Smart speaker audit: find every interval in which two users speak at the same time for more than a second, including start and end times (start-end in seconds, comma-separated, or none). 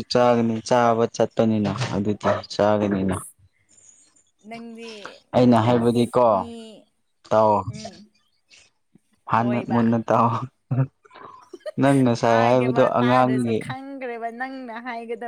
12.2-13.5